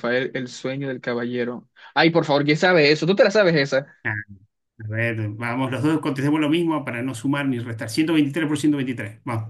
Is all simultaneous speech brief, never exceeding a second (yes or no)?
yes